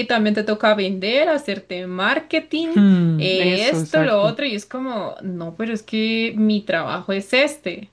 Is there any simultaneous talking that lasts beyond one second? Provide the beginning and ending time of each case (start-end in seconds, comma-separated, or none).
2.7-4.4